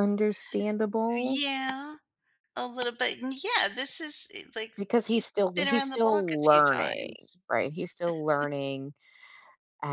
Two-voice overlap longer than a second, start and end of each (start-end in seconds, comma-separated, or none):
4.7-7.4